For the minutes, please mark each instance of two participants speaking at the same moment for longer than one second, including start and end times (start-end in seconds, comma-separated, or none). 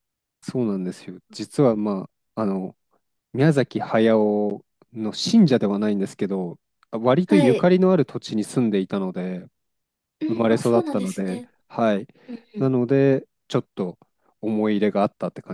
10.3-11.5